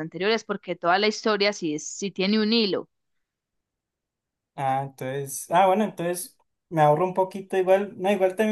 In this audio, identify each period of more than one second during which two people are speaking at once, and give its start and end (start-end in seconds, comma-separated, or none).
none